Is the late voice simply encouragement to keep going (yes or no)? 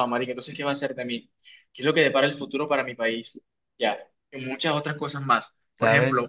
yes